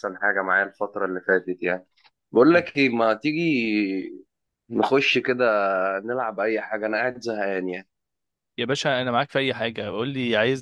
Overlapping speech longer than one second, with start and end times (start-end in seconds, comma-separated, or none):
none